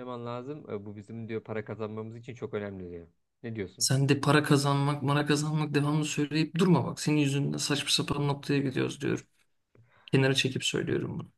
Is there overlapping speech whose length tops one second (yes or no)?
no